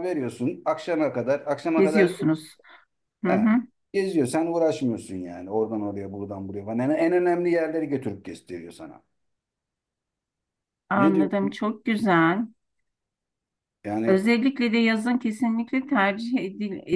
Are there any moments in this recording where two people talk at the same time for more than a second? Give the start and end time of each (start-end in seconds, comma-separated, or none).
none